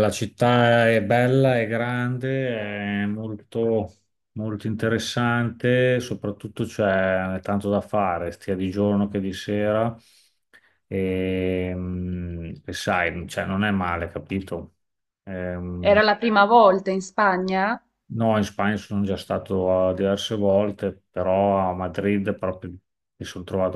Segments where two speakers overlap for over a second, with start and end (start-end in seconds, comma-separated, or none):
none